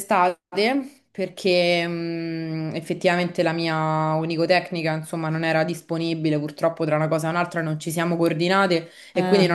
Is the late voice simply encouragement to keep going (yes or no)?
yes